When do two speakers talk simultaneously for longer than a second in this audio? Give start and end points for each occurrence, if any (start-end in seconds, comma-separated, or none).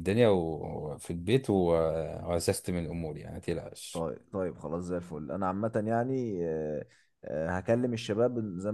none